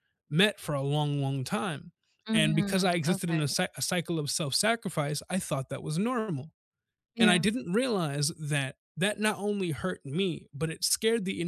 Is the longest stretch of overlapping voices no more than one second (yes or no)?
no